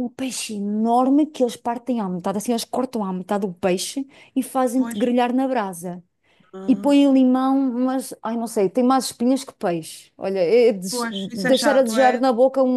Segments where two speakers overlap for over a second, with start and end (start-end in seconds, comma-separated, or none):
10.9-12.3